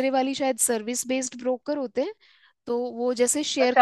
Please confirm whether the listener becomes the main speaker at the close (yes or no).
yes